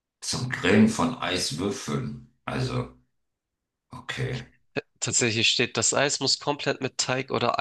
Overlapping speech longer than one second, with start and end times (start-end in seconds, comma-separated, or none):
none